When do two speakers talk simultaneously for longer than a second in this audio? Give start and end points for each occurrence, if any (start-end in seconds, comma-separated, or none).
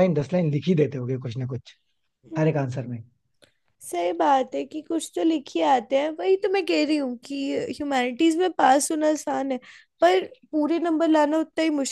none